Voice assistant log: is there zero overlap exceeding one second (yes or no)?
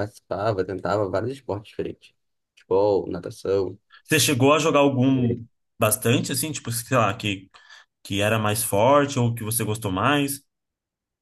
yes